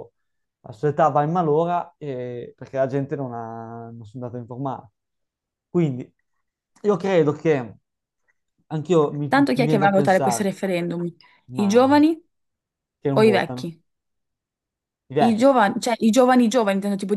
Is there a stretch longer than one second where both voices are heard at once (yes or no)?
yes